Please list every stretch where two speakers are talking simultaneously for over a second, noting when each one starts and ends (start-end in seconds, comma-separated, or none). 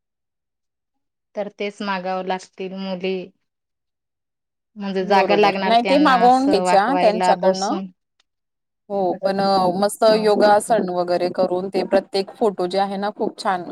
5.1-7.8